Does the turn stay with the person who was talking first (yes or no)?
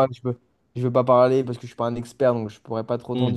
no